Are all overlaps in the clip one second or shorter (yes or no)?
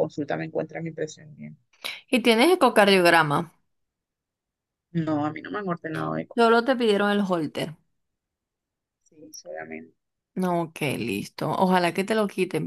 yes